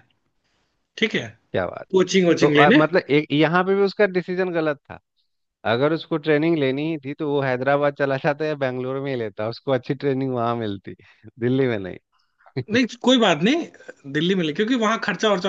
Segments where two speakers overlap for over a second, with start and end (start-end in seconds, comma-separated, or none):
none